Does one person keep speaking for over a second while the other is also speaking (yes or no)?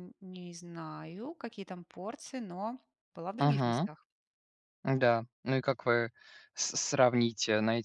no